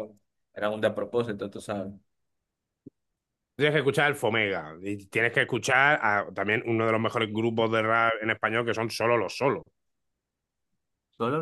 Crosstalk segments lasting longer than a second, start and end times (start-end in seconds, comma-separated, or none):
none